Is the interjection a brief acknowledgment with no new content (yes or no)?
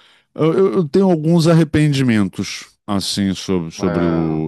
yes